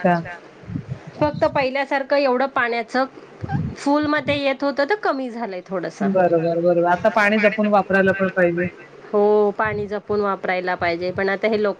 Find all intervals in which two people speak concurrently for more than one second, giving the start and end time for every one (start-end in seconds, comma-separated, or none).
6.1-8.1